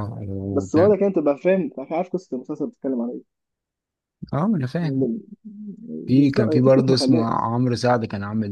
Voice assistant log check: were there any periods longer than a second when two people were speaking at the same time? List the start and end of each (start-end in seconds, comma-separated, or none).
6.2-7.5